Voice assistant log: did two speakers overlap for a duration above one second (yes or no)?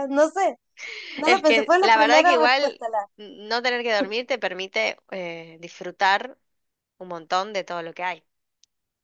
yes